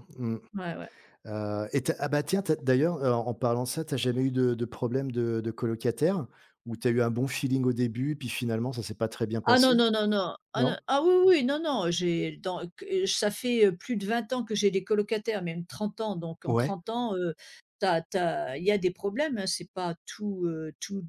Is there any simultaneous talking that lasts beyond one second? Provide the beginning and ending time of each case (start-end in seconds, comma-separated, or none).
none